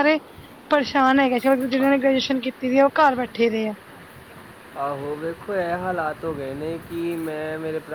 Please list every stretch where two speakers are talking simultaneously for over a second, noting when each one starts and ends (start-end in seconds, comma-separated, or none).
none